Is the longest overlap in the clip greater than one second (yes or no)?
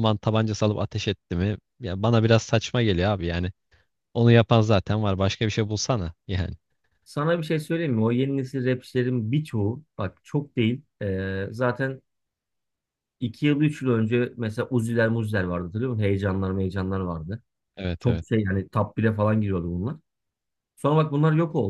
no